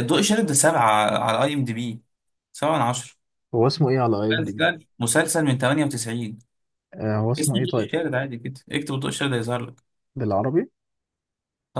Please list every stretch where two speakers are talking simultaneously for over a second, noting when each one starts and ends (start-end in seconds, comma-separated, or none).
none